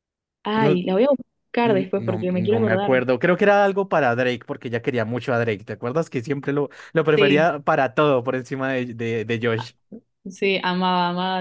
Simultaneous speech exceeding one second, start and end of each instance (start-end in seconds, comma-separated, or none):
1.6-3.0